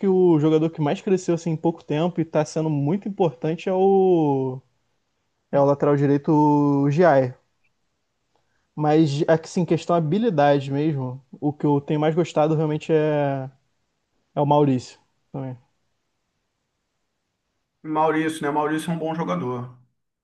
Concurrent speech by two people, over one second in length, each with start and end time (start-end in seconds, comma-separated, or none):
none